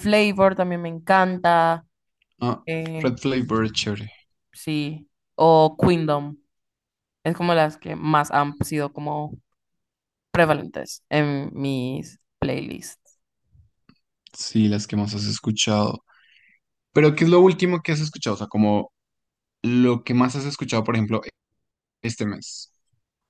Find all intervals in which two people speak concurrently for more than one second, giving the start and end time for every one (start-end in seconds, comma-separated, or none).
none